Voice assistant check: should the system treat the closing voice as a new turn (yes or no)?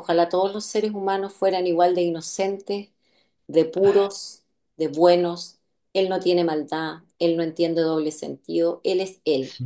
no